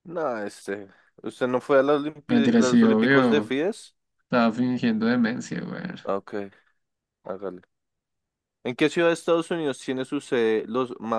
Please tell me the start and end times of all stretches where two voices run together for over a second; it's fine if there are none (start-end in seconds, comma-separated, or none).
2.3-3.5